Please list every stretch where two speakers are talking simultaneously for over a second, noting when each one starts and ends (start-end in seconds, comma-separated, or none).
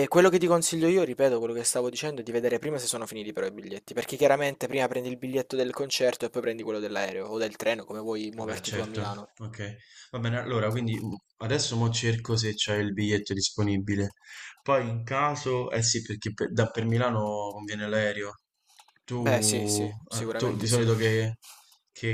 19.1-20.9